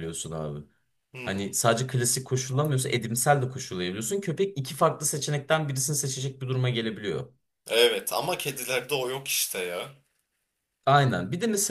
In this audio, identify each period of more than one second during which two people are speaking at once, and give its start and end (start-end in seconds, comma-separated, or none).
none